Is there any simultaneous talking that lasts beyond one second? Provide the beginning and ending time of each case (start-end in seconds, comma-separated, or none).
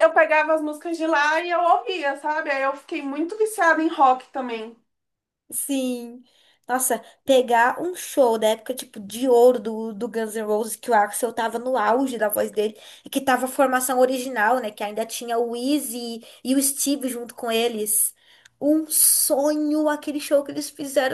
none